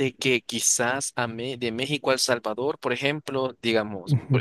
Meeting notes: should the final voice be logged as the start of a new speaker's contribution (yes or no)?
no